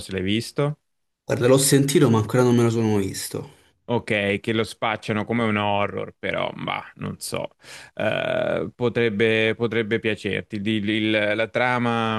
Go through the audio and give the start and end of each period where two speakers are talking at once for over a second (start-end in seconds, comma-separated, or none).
none